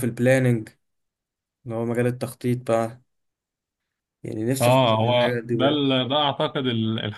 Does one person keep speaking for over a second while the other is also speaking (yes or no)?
yes